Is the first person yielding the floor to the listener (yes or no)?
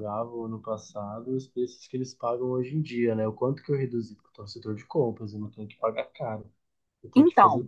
no